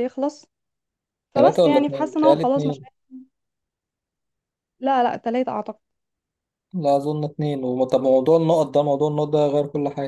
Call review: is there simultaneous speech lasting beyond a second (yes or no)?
yes